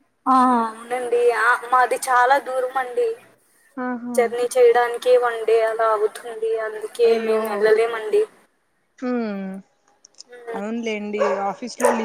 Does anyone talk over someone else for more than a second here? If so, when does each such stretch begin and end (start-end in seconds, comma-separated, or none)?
none